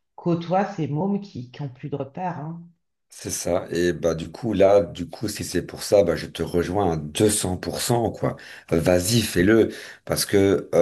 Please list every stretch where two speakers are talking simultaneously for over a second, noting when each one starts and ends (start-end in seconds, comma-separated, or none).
none